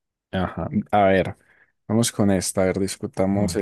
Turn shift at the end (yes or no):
no